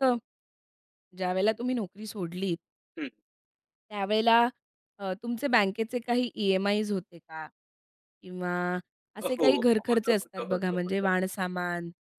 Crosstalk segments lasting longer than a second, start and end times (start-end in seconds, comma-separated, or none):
9.2-11.1